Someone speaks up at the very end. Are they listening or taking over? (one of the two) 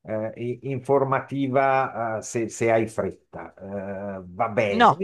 listening